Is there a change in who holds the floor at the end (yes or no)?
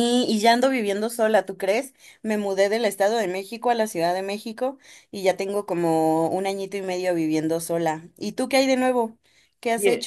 yes